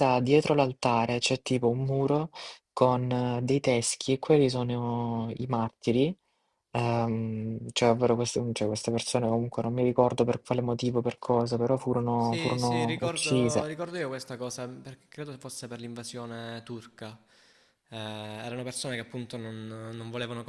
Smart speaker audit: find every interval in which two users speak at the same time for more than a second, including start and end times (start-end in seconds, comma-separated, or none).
12.2-13.7